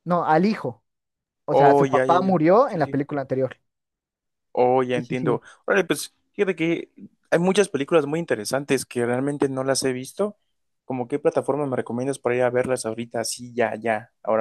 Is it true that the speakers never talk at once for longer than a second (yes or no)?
no